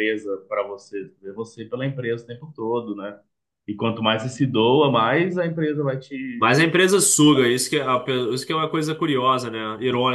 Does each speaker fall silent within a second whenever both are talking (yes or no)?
yes